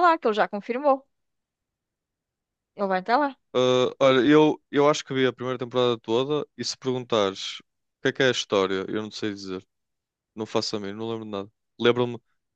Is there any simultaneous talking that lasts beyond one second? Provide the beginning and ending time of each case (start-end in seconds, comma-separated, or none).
none